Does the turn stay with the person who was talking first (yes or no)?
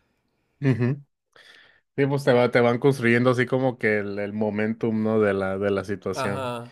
yes